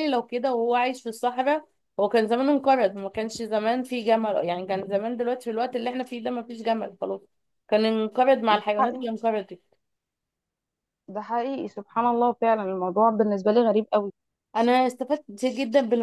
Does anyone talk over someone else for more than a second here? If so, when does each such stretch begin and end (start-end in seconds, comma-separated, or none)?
none